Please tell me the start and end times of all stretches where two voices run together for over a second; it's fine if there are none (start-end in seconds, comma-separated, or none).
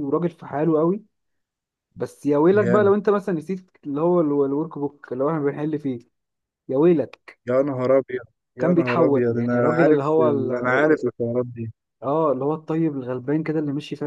8.6-11.0